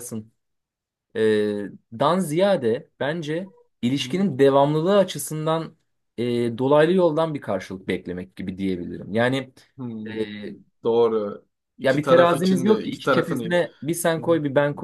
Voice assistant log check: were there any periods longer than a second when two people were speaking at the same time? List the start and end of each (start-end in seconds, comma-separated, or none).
11.8-13.6